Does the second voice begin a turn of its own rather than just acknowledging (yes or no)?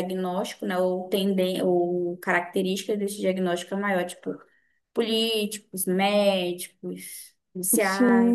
yes